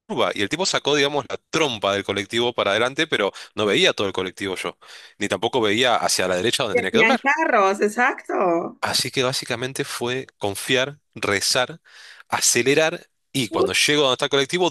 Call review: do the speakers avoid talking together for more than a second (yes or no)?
yes